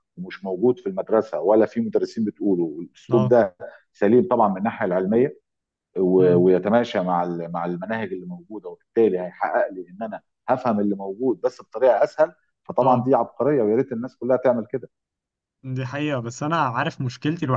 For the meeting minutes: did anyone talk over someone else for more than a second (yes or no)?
no